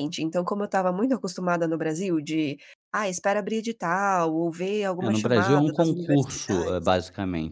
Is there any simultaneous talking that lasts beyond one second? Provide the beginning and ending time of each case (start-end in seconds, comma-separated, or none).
5.0-6.7